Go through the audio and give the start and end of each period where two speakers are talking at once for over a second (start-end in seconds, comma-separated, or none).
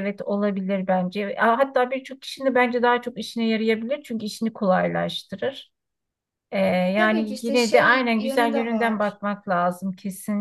7.0-9.2